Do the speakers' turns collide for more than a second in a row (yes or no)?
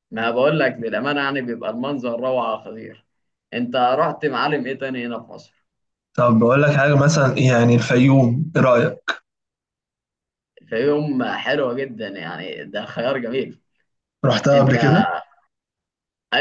no